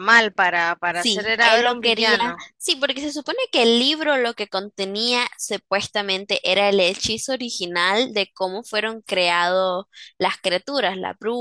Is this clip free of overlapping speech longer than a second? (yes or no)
no